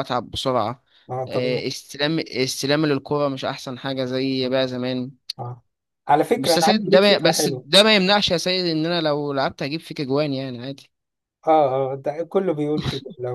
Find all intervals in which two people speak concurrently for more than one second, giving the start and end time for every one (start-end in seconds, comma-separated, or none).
6.4-7.7